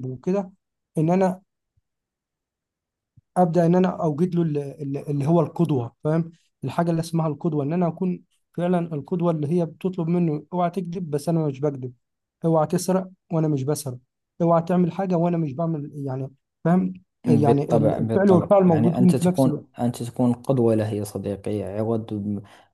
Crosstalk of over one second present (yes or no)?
yes